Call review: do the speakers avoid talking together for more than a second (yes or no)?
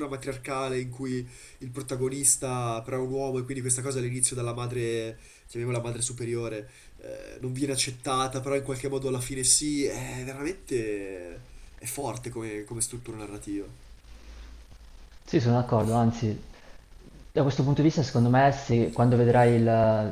yes